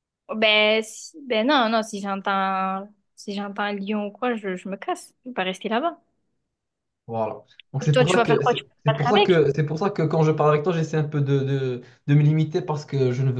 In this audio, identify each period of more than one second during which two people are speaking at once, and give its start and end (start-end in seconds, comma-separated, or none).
7.9-9.4